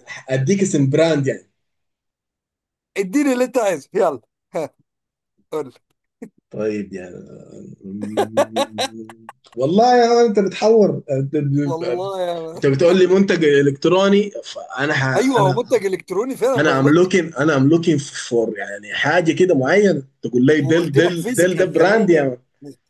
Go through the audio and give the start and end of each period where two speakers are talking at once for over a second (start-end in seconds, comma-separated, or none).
20.6-22.4